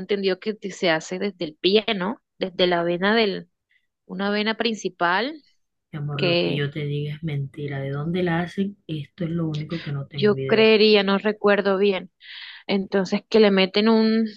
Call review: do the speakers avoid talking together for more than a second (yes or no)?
yes